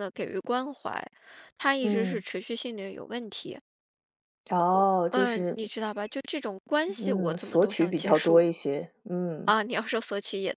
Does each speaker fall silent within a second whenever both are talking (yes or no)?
no